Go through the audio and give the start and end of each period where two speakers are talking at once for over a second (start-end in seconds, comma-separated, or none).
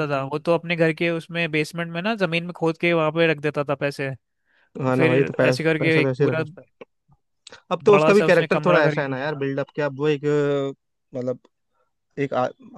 4.9-6.4, 7.9-9.4